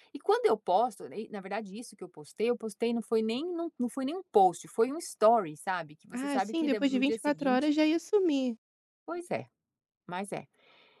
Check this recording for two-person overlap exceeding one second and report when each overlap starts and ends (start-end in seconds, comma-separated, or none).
6.1-7.7